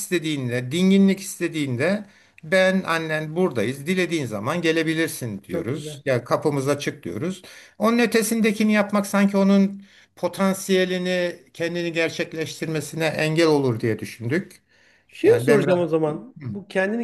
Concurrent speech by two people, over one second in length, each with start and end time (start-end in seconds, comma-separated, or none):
none